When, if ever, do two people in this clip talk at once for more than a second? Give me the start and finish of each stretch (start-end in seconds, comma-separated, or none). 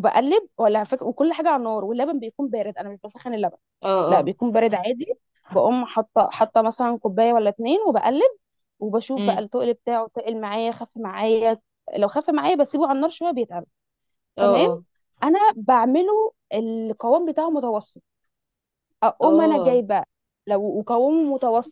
none